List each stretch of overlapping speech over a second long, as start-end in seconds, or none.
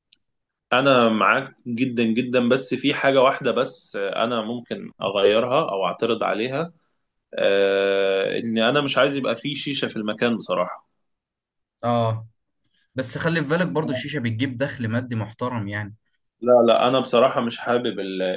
none